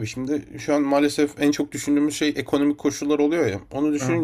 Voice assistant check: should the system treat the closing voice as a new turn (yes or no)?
no